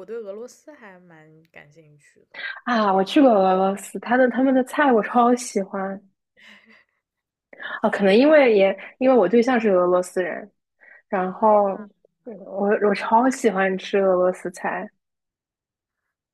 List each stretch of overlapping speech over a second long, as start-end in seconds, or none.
none